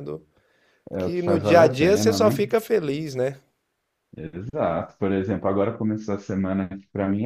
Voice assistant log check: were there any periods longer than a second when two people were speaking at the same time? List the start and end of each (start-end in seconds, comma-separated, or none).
1.0-2.4